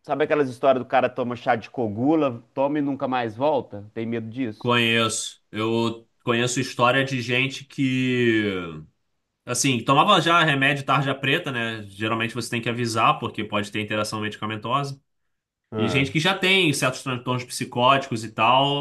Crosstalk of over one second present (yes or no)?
no